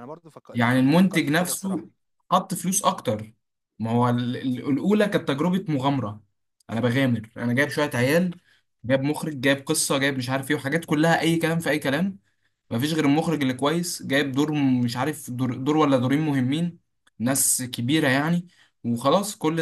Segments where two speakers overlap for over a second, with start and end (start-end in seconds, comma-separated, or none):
0.5-1.9